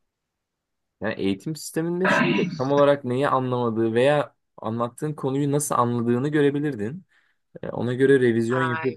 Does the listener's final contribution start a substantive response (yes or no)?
no